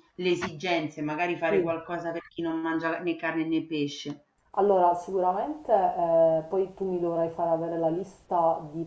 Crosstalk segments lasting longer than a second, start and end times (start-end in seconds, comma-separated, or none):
none